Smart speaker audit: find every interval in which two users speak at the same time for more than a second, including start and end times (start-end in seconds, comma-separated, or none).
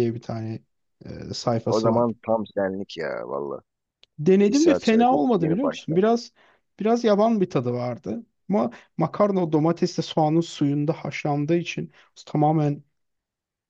4.5-6.0